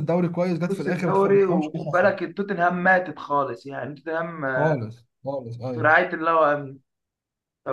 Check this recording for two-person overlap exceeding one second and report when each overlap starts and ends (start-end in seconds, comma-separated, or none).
0.7-2.1